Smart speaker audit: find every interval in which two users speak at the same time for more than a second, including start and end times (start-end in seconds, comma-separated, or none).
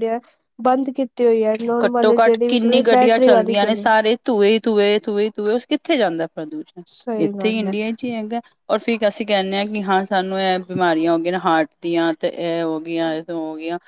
1.8-3.9